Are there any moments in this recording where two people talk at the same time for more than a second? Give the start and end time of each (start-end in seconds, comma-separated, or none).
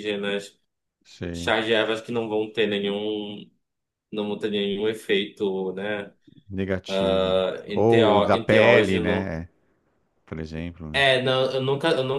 7.7-9.3